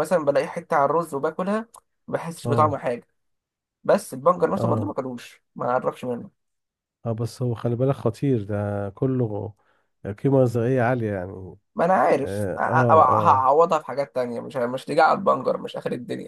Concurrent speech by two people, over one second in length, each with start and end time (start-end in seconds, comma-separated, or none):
12.2-13.5